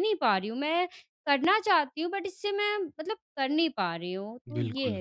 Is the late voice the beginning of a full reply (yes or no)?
yes